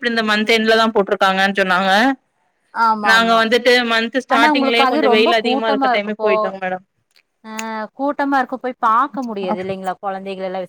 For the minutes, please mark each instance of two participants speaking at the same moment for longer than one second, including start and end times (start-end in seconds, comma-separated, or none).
4.3-6.3